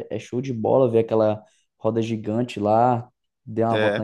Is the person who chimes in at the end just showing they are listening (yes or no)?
yes